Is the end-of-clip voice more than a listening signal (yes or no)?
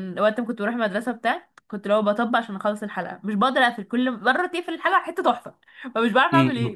yes